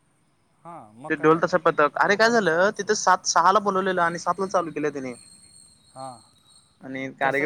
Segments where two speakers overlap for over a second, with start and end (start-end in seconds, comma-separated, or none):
1.1-3.0